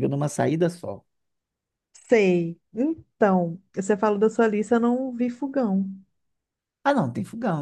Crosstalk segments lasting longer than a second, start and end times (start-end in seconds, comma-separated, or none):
none